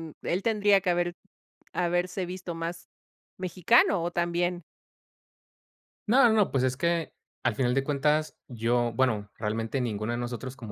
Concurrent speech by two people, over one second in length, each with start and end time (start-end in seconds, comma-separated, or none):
none